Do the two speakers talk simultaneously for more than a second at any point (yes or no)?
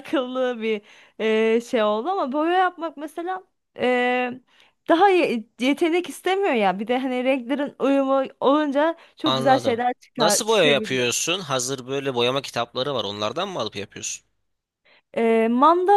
yes